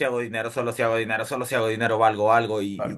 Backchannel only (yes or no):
yes